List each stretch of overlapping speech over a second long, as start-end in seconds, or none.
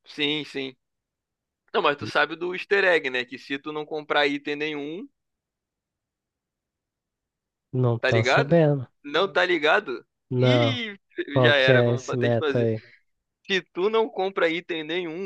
11.4-12.7